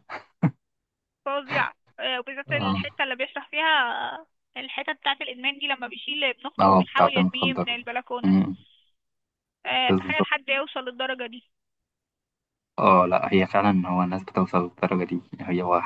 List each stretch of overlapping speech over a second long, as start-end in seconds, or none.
6.6-8.4